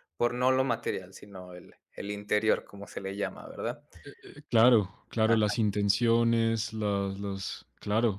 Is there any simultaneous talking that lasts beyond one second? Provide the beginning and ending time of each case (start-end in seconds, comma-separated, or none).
none